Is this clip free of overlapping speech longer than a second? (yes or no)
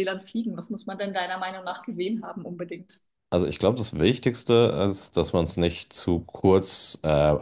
yes